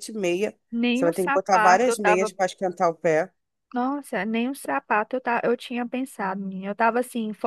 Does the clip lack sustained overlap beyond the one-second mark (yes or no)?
no